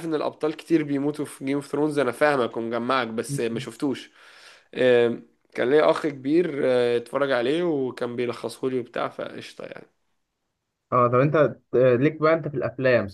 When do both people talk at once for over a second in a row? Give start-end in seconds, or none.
none